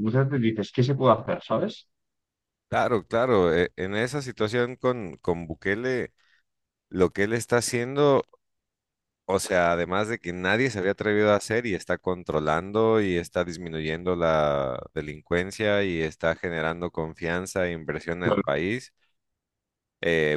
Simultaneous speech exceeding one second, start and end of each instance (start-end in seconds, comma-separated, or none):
none